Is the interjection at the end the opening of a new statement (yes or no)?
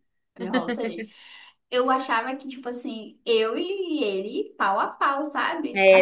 yes